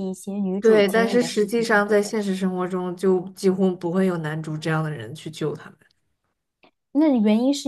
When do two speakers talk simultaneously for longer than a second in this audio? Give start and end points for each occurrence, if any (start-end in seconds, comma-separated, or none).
0.6-2.0